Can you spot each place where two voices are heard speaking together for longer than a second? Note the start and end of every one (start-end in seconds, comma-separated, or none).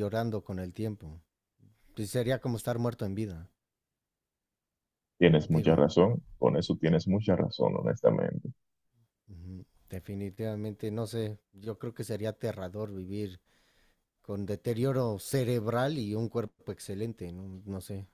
none